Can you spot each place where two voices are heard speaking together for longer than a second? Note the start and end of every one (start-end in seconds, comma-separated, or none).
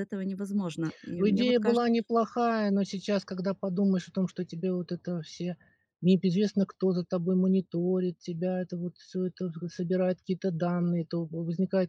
none